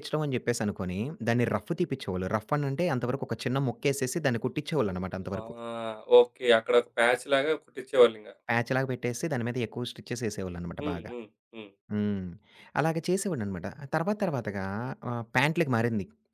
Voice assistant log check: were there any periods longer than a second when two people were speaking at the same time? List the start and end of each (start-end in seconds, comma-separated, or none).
none